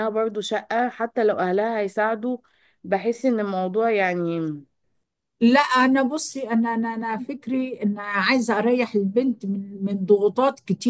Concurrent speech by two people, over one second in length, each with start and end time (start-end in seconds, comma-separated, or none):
none